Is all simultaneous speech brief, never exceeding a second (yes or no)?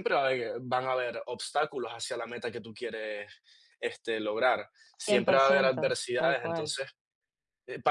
no